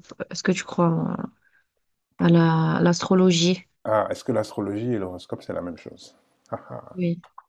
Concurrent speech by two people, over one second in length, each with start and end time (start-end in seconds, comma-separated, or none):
none